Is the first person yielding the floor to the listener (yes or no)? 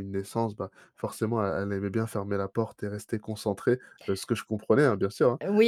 yes